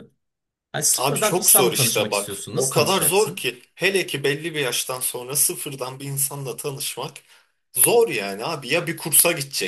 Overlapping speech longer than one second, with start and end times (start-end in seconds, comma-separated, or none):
1.0-3.5